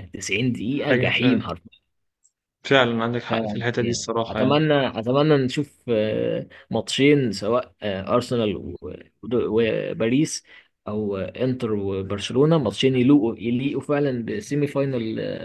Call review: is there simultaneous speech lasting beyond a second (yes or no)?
yes